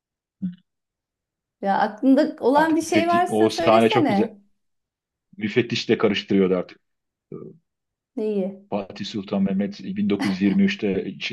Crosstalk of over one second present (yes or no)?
yes